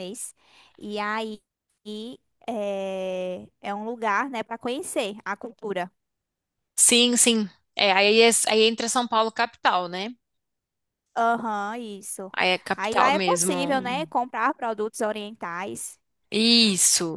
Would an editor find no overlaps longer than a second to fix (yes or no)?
no